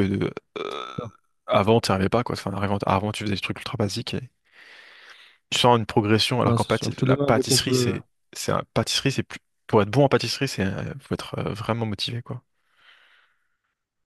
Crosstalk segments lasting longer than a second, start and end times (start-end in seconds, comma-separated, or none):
6.4-7.9